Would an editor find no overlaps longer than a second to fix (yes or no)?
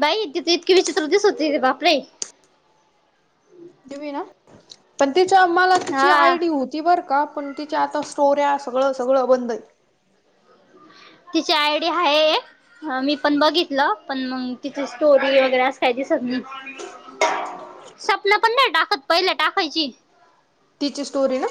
yes